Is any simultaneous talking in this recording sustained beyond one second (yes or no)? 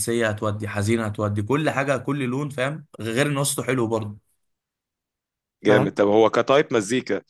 no